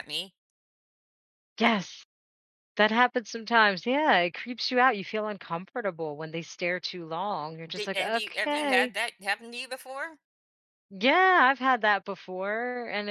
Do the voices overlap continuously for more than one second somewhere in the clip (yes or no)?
yes